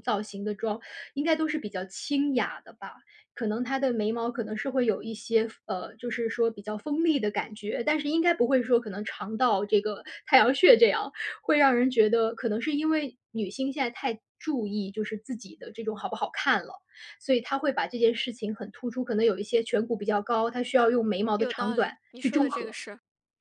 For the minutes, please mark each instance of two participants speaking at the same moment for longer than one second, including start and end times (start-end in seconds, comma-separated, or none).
21.4-22.8